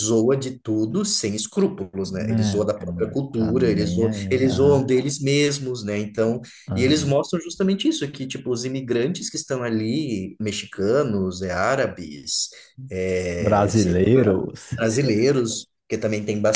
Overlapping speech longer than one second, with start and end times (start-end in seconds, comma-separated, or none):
2.4-4.9